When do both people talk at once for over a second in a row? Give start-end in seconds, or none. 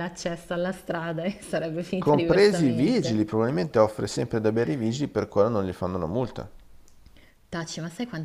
2.0-3.2